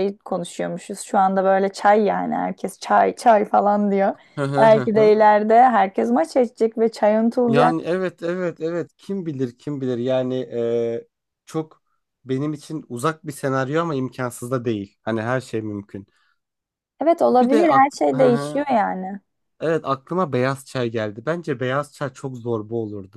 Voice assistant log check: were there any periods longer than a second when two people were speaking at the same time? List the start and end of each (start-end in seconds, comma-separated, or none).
17.3-18.6